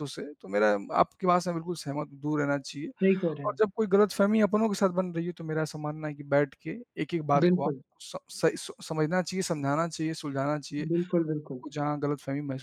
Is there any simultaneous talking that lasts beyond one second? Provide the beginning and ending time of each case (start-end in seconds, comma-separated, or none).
none